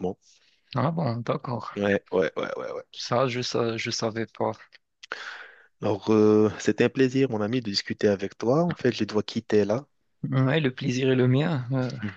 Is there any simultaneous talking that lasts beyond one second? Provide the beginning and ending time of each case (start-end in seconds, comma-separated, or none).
none